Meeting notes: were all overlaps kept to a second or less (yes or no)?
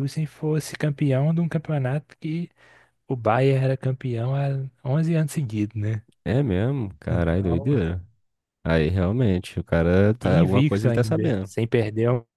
no